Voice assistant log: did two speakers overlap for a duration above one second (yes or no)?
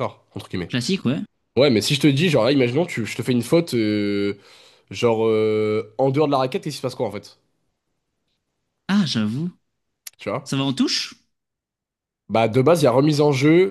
no